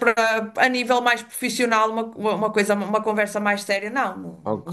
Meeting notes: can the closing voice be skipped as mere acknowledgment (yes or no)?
no